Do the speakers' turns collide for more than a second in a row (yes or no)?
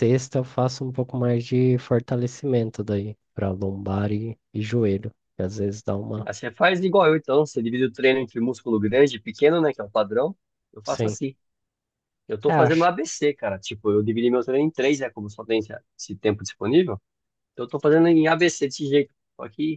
no